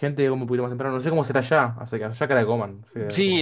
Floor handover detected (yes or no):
yes